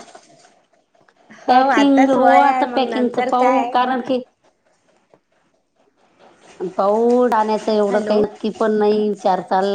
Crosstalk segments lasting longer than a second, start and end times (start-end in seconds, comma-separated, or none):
1.5-3.7